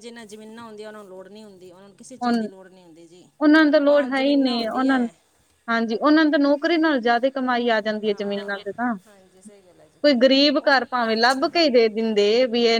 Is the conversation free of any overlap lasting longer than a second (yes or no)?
no